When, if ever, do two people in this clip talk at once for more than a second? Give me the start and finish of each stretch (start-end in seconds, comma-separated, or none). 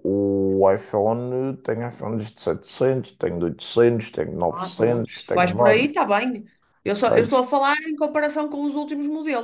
4.5-6.0